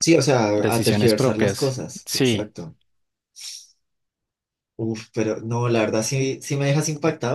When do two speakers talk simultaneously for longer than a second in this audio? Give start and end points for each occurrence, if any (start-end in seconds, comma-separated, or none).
0.6-2.5